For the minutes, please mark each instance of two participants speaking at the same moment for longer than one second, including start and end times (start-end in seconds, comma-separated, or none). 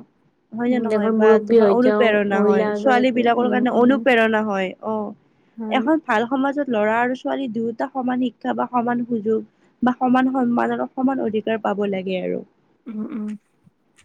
0.7-4.0